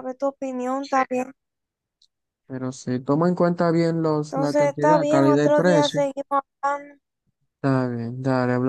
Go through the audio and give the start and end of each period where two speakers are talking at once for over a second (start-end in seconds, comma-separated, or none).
4.3-6.0